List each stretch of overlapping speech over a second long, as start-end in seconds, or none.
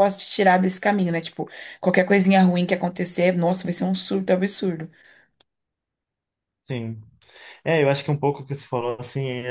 none